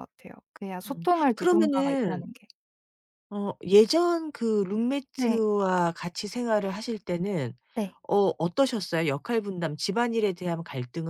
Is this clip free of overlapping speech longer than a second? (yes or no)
no